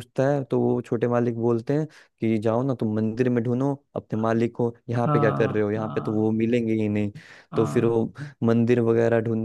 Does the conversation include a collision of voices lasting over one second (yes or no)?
yes